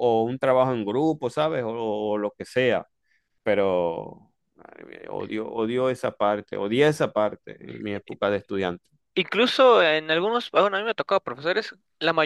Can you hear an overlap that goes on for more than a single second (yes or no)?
no